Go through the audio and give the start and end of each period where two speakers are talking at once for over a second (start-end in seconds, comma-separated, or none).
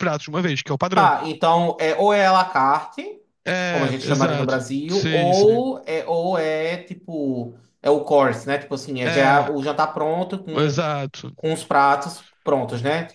3.7-5.6